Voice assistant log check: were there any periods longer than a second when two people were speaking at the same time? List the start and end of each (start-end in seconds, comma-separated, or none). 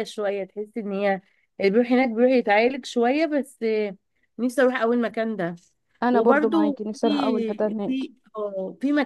6.1-8.0